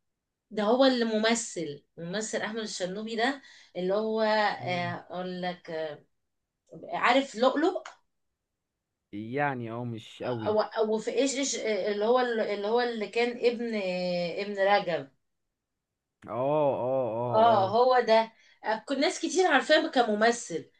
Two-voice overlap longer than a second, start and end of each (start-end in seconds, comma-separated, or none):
none